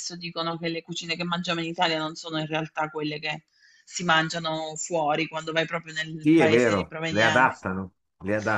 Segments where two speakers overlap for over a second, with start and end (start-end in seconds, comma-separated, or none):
6.2-7.7